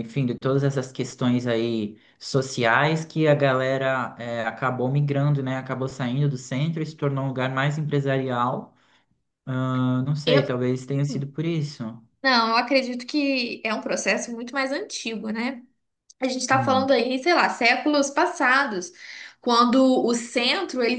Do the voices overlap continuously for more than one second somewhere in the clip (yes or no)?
no